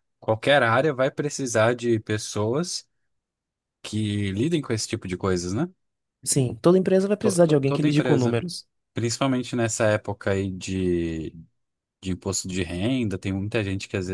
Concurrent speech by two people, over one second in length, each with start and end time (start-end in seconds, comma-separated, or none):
7.2-8.4